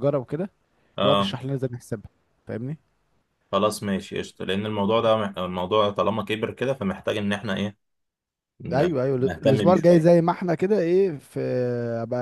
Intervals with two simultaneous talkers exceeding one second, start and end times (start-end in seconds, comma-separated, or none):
8.7-10.2